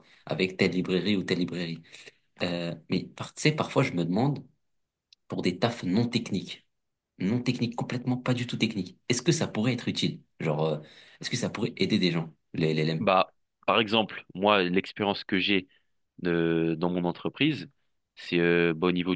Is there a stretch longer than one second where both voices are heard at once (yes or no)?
no